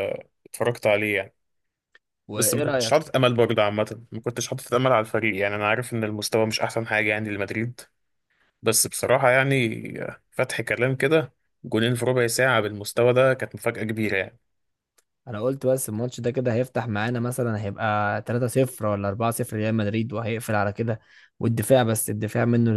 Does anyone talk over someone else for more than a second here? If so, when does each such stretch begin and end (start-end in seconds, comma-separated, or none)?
none